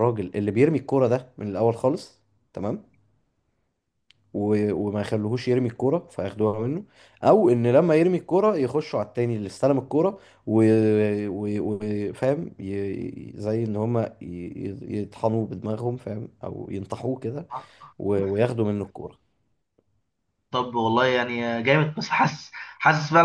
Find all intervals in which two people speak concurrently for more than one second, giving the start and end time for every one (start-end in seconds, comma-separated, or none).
none